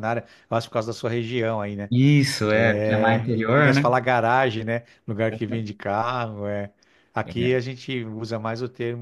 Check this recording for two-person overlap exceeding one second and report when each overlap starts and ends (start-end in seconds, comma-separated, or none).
2.5-3.9